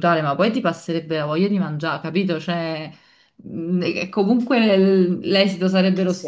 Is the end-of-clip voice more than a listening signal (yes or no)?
no